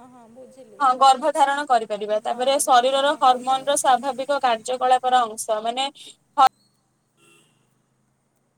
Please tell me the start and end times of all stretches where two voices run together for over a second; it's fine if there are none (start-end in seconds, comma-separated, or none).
2.3-3.7